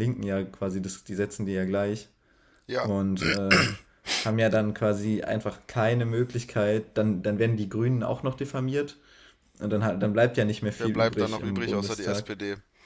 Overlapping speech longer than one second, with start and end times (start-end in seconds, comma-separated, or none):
10.8-12.3